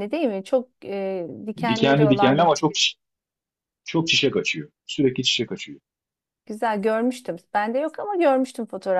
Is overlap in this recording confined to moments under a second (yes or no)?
no